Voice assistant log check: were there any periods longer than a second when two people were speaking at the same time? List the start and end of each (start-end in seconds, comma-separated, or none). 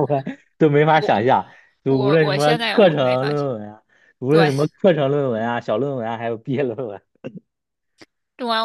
1.9-3.5